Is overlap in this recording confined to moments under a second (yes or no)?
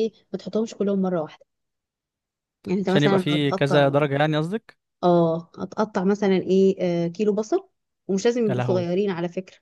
no